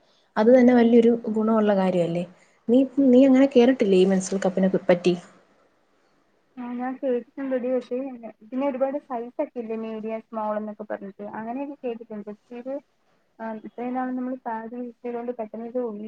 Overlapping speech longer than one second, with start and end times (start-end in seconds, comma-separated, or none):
none